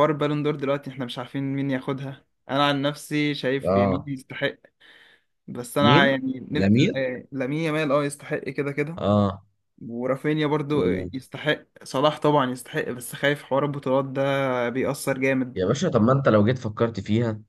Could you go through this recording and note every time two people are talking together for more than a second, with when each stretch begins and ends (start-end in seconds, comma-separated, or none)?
5.8-7.1